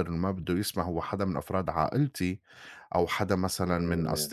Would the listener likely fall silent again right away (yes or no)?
yes